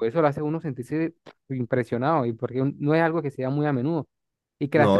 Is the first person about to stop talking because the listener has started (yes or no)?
no